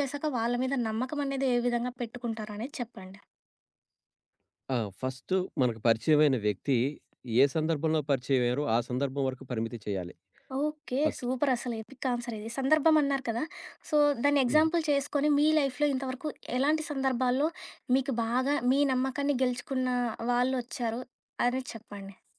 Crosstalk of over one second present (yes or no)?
no